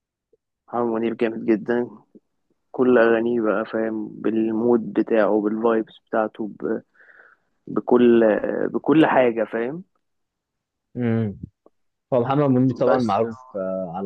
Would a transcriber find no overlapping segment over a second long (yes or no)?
yes